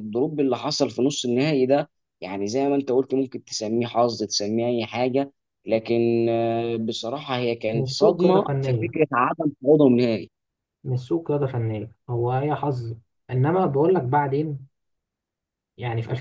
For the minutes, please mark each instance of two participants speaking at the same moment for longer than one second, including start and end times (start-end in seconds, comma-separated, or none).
7.7-8.9